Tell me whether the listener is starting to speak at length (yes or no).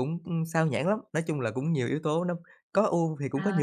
yes